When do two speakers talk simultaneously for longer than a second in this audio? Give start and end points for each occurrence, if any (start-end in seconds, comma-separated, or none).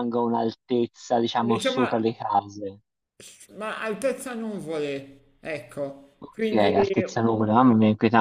none